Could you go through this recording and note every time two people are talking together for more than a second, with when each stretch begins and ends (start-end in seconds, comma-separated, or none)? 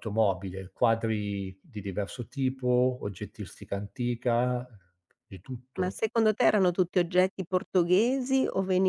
none